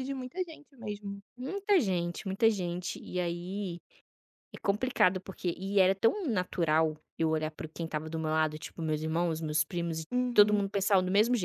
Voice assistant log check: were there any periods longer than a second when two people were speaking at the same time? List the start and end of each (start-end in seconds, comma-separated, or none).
none